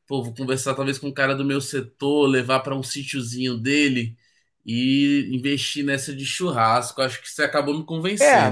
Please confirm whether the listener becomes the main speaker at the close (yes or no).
yes